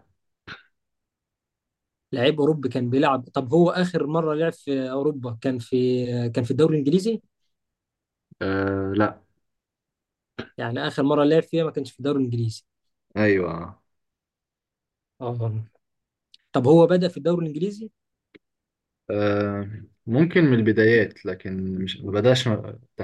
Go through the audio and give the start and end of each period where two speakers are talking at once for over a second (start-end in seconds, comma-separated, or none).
none